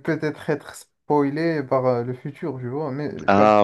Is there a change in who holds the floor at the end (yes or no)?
no